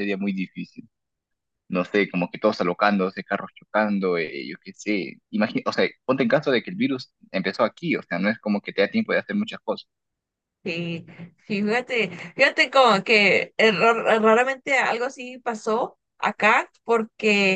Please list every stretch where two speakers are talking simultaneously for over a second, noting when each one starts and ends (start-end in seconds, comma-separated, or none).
none